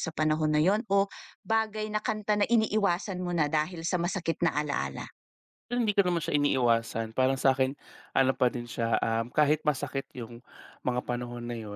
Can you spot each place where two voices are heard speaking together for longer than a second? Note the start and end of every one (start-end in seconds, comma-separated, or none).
none